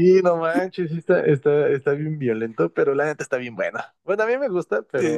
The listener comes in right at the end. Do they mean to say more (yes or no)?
yes